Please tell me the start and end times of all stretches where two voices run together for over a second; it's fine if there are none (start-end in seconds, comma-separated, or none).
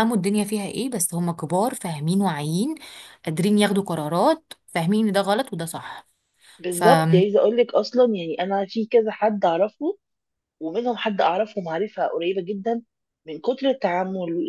none